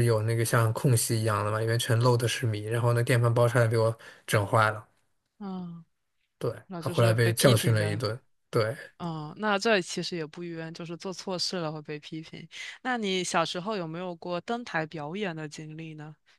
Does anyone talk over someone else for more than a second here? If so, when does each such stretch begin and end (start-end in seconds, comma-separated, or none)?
6.7-8.0